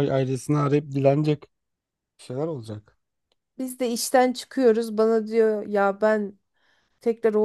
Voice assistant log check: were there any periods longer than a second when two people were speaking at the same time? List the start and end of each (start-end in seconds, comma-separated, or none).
none